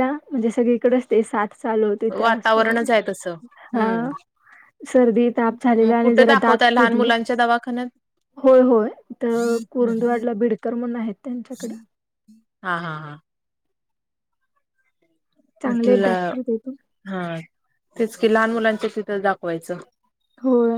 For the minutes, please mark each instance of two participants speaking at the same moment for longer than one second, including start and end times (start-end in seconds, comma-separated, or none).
5.5-7.1